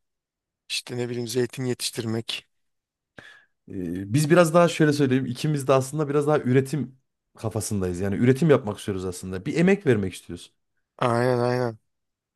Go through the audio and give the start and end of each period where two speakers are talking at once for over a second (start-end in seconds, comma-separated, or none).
none